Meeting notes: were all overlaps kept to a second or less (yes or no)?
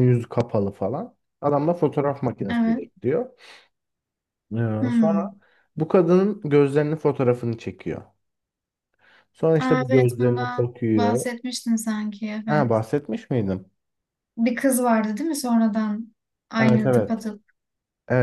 no